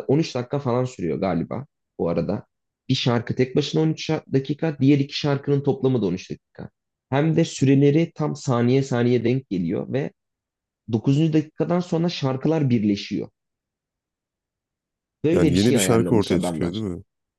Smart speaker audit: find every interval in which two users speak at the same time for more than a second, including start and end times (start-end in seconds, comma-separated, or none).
15.3-16.8